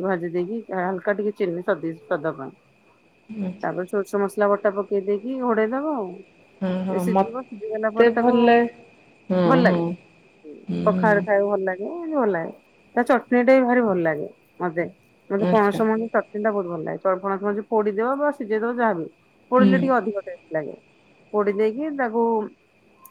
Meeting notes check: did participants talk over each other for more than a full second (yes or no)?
yes